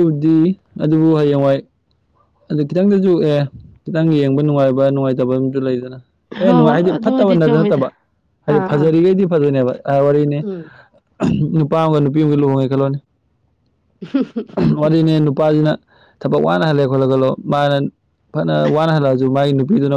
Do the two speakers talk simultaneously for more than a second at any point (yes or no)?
yes